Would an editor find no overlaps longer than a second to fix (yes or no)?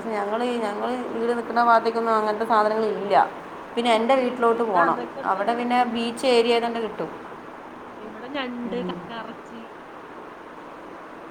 no